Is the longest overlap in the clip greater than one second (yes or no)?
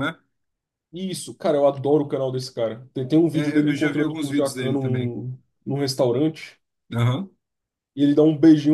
yes